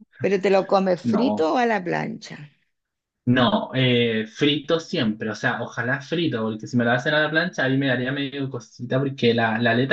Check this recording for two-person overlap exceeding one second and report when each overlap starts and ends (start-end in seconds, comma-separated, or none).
none